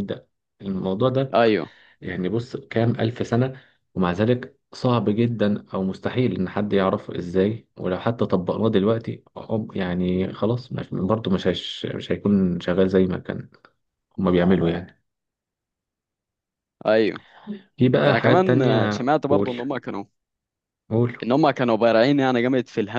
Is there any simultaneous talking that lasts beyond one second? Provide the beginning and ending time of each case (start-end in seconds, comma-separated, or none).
18.0-19.5